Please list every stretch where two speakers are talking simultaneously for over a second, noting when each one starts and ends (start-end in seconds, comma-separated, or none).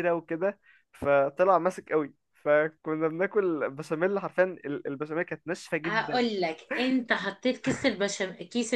none